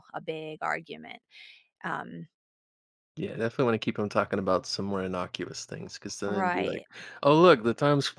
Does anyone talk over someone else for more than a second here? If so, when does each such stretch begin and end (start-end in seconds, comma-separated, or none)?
none